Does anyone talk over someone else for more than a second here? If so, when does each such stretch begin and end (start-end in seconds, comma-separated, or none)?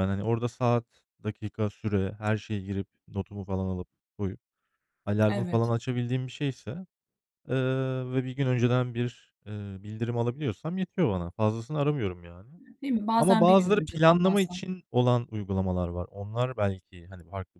13.2-14.6